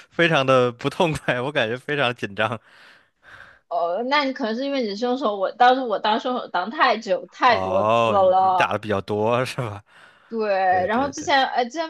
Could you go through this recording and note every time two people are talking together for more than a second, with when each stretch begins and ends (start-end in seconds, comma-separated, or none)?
7.4-8.7